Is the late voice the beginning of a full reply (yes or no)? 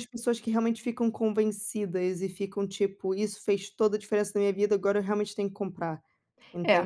yes